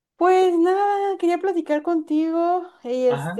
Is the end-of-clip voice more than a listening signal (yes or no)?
no